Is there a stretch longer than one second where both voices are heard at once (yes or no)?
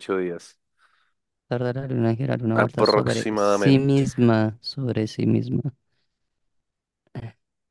yes